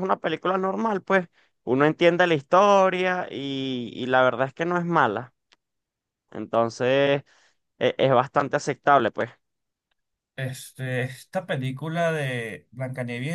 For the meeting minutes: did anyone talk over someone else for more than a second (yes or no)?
no